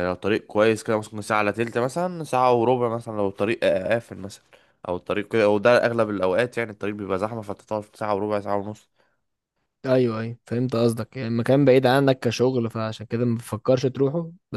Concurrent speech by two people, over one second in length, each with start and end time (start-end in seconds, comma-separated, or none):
none